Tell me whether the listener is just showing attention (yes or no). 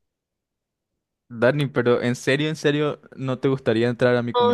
no